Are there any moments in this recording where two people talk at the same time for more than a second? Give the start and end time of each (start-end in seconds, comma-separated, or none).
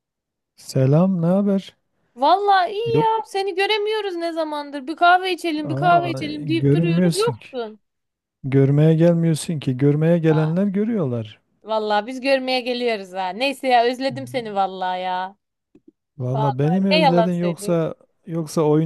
5.6-7.5, 16.3-17.8